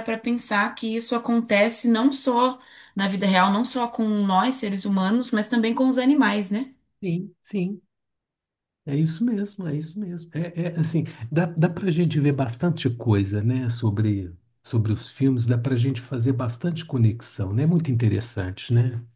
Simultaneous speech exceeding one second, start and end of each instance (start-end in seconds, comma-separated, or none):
none